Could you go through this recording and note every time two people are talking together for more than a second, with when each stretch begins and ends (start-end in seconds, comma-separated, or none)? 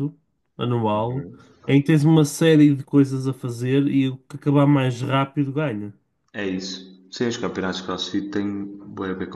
none